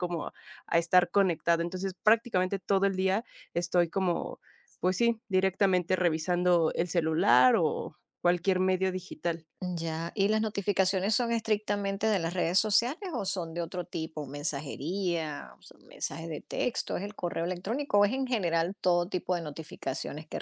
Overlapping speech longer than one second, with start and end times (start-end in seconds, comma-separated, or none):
none